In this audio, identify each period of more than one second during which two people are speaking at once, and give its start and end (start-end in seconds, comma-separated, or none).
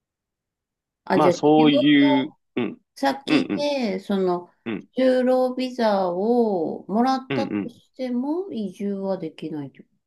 1.1-2.3